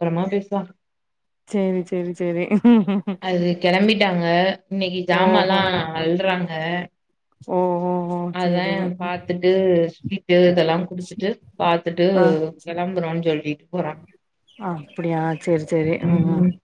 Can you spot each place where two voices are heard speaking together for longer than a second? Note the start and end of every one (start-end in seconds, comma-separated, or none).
none